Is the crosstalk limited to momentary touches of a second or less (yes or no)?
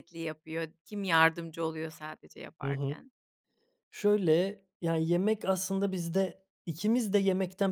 yes